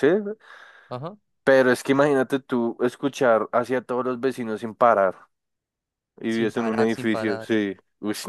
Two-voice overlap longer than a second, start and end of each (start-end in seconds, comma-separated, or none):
6.3-7.5